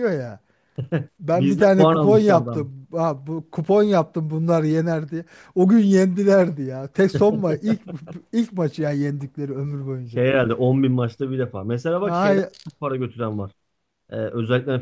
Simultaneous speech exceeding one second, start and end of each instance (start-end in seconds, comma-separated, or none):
1.3-2.6